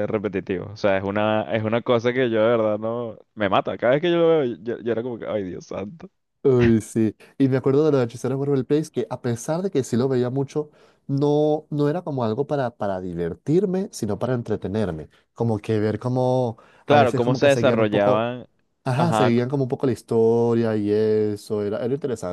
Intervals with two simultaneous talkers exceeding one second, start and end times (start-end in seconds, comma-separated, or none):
16.9-18.3